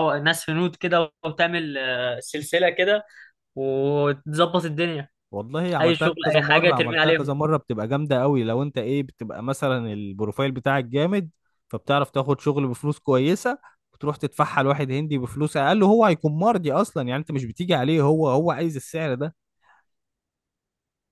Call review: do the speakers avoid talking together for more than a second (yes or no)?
no